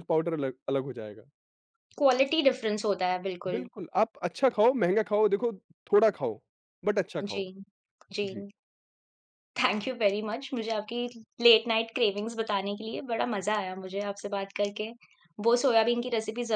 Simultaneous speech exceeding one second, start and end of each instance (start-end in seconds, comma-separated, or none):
none